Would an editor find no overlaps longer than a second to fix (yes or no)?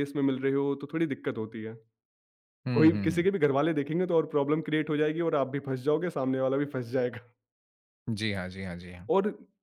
yes